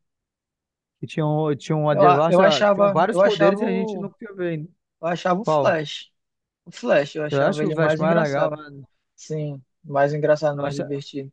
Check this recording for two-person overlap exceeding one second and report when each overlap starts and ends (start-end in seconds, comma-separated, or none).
1.9-4.1, 7.3-8.6